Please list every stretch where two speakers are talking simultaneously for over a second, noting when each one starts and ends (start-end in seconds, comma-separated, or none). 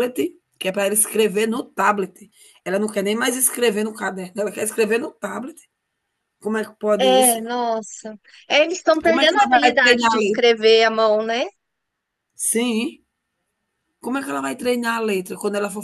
9.1-10.4